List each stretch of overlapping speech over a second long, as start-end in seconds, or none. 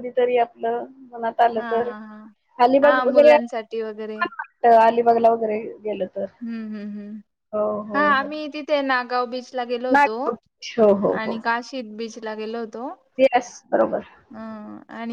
2.8-4.2